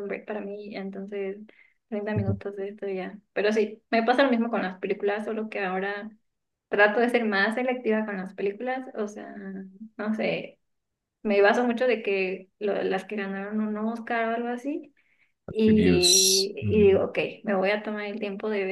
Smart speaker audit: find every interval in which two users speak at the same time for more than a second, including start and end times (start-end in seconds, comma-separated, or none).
15.7-17.0